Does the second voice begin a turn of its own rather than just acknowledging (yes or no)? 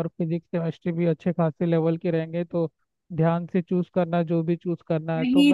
yes